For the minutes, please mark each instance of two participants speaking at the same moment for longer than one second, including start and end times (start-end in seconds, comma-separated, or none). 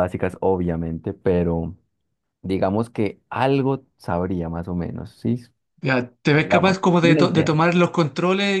6.4-7.6